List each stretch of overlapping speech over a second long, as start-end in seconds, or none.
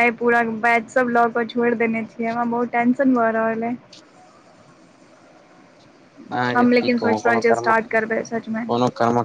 6.5-8.6